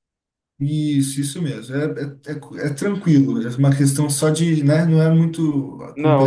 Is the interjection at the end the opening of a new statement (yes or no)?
yes